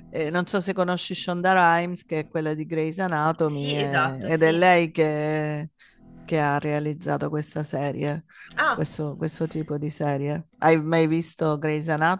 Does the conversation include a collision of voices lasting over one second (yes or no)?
yes